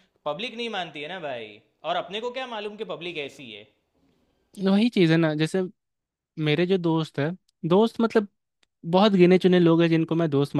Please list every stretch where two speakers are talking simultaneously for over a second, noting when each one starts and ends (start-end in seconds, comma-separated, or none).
none